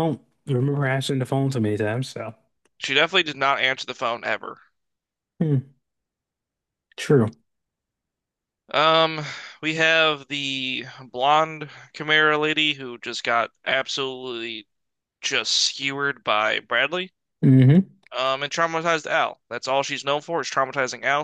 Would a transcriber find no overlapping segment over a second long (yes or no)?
yes